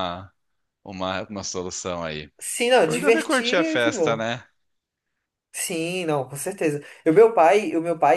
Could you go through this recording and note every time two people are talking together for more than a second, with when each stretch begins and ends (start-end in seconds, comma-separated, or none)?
2.8-4.3